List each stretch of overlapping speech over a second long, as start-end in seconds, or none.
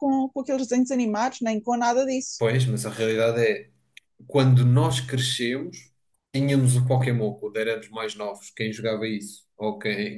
none